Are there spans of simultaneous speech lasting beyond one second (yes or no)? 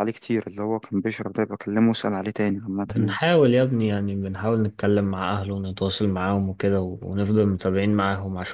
no